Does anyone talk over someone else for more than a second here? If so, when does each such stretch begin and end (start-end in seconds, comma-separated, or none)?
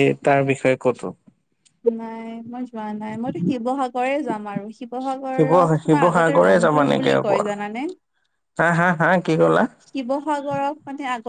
5.3-7.4